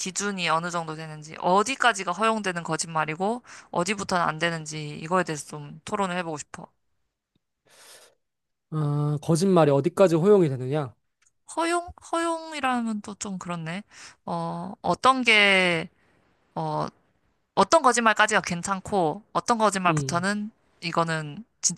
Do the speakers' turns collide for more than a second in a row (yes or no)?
no